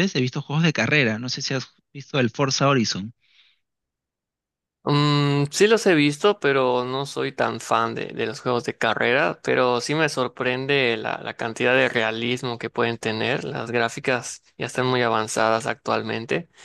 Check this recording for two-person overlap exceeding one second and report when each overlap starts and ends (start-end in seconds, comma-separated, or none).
none